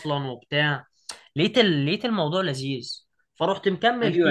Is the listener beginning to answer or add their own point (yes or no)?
yes